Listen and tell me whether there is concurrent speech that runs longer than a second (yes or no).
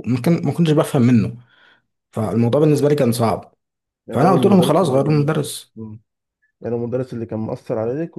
yes